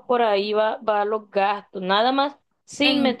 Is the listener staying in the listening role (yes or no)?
yes